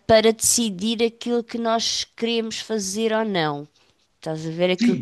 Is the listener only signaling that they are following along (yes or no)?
no